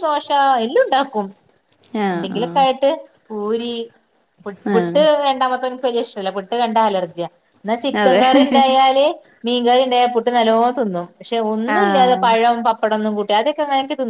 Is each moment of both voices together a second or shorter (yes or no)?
yes